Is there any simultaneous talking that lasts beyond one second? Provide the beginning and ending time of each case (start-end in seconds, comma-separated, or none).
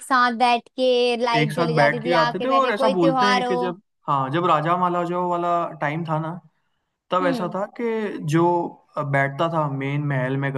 1.4-3.8